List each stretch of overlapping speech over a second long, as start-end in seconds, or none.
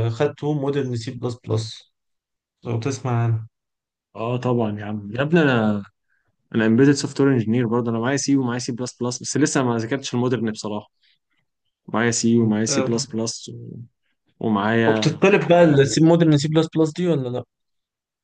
none